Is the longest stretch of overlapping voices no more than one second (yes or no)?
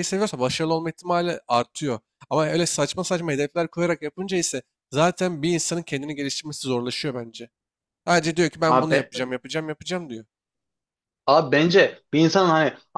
yes